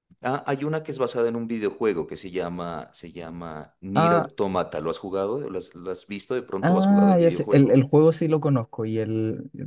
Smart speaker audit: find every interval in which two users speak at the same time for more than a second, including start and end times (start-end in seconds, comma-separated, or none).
6.6-7.8